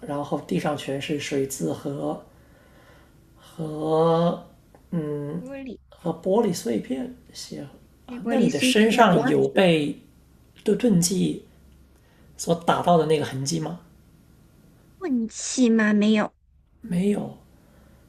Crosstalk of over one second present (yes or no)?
yes